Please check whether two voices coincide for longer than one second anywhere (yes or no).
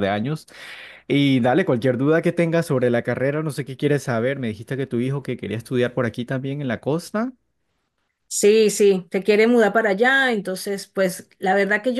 no